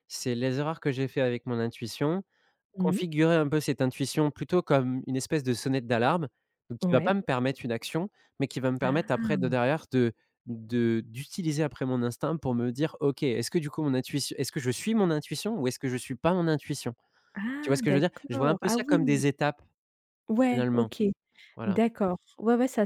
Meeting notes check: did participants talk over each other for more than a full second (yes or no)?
yes